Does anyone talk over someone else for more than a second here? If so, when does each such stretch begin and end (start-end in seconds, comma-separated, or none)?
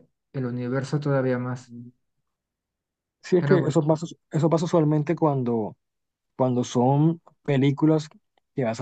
none